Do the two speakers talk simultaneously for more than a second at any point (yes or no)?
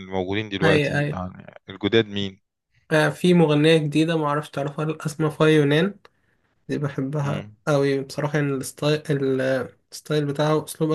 no